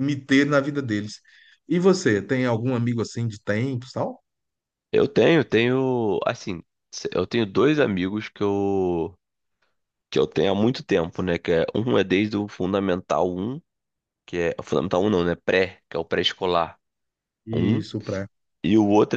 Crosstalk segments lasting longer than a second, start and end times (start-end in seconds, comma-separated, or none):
none